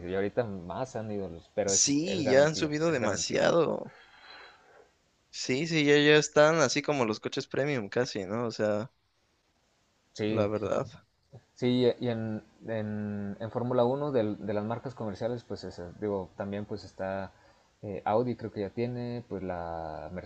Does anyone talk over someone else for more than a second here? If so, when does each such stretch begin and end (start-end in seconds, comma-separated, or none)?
1.7-3.4